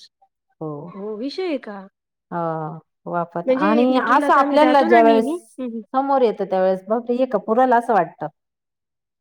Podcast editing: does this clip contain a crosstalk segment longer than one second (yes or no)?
yes